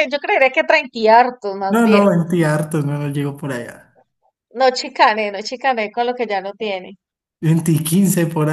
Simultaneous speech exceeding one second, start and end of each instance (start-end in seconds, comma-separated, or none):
none